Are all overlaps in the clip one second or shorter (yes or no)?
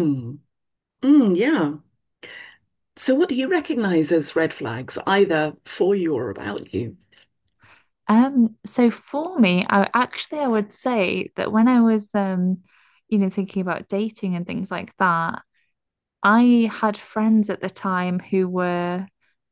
yes